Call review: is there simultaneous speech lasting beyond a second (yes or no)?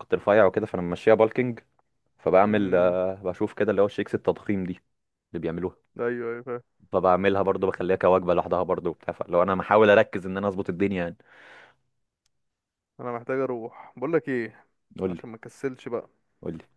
no